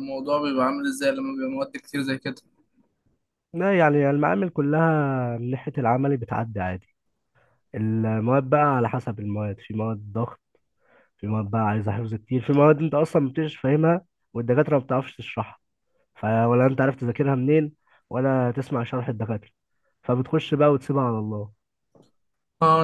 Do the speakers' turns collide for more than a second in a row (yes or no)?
no